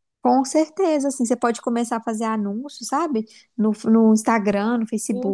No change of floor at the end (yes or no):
no